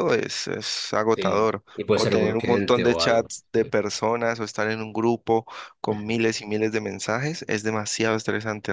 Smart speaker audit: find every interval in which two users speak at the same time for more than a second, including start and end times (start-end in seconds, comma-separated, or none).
1.1-3.3